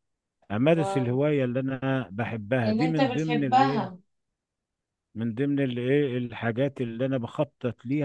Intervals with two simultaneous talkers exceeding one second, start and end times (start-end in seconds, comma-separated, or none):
2.7-3.9